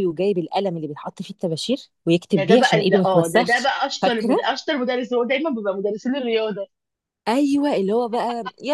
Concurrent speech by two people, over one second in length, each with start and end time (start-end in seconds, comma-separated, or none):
2.3-4.4